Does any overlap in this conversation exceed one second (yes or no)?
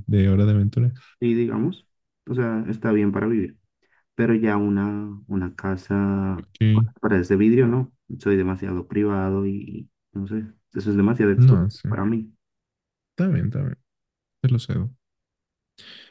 no